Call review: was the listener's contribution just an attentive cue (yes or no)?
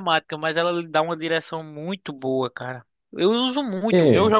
yes